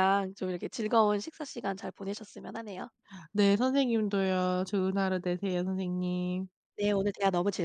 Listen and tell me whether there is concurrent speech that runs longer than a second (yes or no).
no